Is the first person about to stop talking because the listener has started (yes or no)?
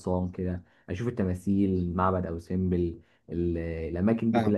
no